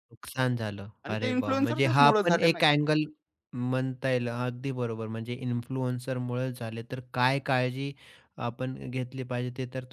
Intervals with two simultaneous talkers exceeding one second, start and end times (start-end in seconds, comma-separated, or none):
1.1-2.6